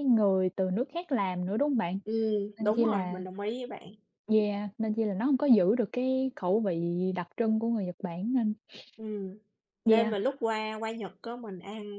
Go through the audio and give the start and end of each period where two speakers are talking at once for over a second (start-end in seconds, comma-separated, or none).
none